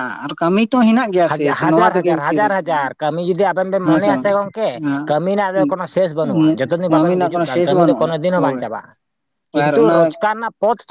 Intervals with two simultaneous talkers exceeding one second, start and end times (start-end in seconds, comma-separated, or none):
6.9-8.6